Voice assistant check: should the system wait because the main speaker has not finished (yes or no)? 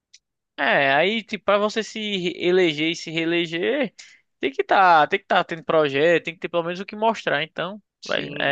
no